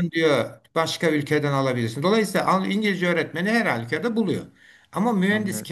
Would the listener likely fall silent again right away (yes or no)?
yes